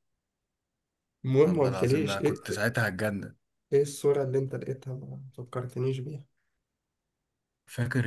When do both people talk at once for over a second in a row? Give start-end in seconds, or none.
1.4-2.8